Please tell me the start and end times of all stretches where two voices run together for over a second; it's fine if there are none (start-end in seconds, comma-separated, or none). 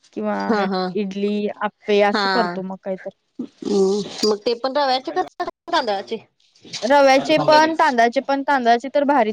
none